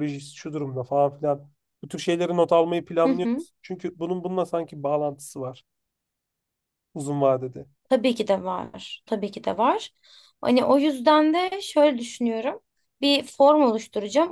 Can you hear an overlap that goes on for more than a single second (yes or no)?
no